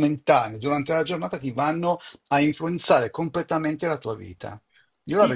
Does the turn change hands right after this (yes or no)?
yes